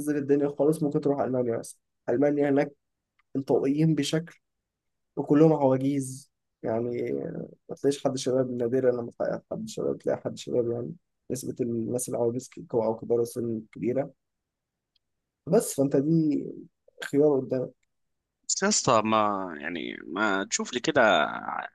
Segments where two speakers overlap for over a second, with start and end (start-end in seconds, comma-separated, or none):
none